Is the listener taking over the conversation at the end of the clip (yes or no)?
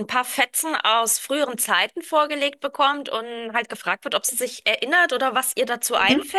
no